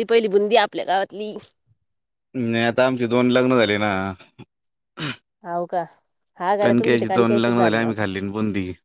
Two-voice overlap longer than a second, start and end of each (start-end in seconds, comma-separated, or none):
6.6-8.0